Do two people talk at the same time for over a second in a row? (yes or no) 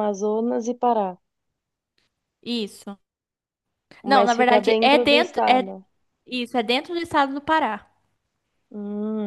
yes